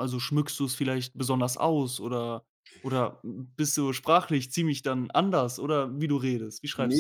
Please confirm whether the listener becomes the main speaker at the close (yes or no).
yes